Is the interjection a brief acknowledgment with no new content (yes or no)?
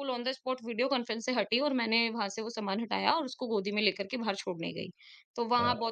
yes